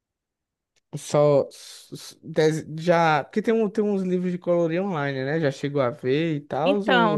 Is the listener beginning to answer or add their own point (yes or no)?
yes